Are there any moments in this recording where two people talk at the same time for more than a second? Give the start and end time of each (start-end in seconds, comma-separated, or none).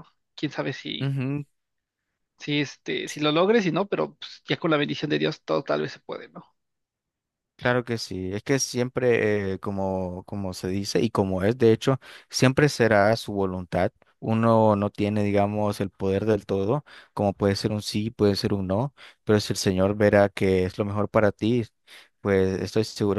none